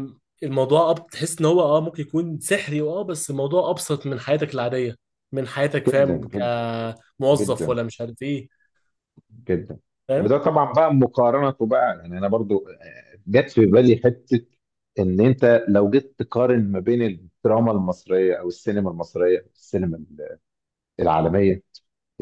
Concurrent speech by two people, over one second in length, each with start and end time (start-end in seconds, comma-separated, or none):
none